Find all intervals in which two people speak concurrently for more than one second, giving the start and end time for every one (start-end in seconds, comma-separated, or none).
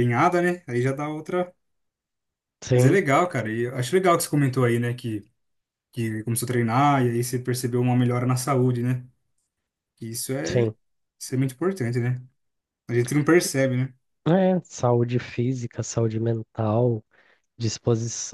none